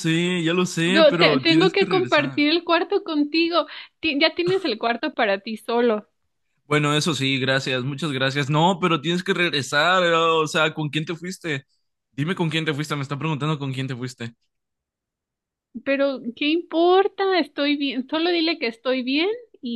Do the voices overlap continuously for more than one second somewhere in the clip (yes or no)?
yes